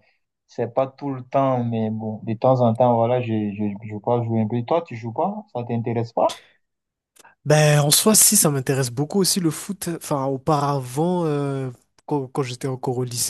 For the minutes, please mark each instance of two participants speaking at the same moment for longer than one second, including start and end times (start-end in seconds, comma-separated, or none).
none